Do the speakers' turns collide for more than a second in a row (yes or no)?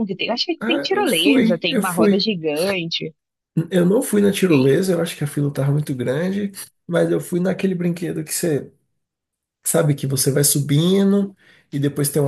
yes